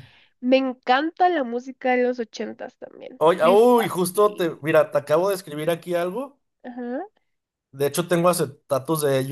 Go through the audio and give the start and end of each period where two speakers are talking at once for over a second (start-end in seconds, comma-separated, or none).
3.2-4.6